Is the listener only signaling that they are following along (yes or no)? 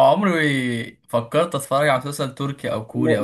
no